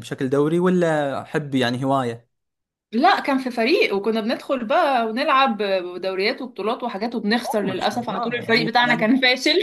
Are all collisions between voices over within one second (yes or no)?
no